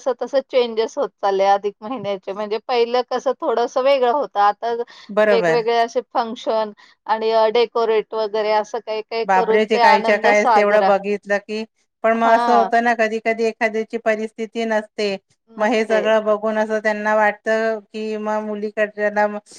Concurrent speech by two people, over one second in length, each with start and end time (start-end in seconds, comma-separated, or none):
9.3-10.9